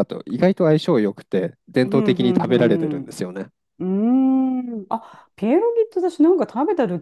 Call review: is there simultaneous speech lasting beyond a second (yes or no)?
yes